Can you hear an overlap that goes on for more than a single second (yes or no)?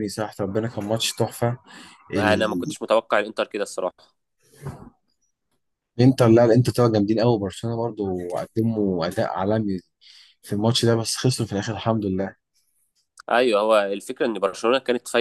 no